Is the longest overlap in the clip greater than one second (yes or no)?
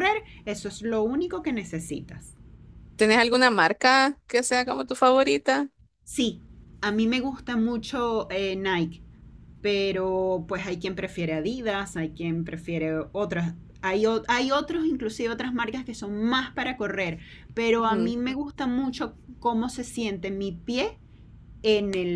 no